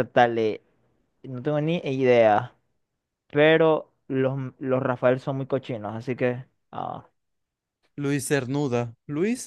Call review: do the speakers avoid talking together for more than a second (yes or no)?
yes